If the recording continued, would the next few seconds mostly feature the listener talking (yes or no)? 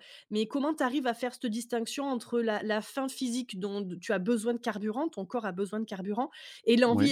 no